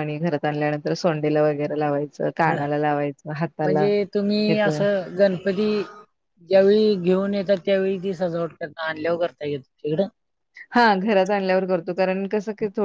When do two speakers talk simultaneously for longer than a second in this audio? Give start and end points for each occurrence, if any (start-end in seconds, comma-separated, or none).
none